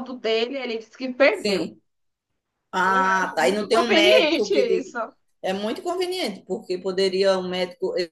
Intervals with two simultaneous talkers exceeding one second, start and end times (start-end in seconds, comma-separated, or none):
2.8-5.0